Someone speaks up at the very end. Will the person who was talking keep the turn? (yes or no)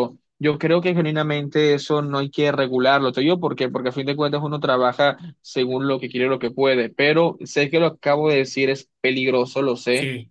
yes